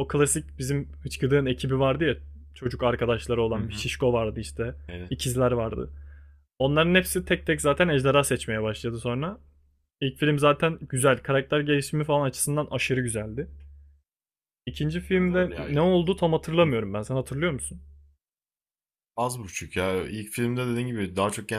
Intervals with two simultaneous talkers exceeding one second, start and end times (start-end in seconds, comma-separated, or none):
none